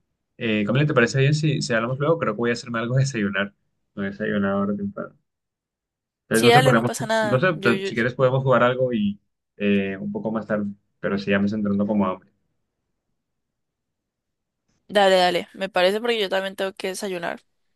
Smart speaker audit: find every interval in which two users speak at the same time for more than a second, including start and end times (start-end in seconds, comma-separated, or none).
6.3-7.9